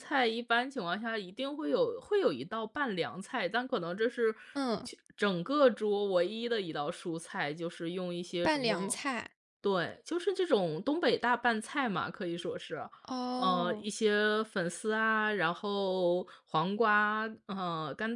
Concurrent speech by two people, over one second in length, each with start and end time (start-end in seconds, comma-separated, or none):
none